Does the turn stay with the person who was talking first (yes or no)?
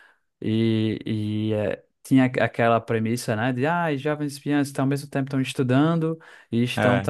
yes